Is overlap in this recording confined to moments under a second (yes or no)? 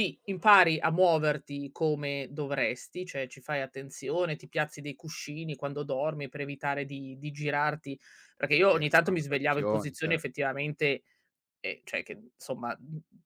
no